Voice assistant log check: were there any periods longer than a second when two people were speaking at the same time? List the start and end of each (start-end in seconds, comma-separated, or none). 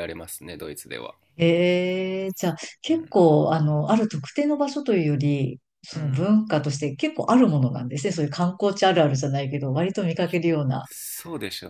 none